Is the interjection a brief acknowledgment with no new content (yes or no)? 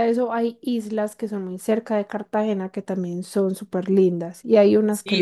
no